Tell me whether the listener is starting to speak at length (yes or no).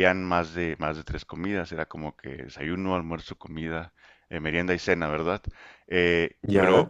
no